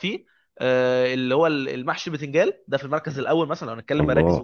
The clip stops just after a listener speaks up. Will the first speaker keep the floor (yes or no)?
yes